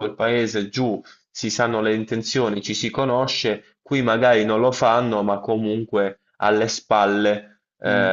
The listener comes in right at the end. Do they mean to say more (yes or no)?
no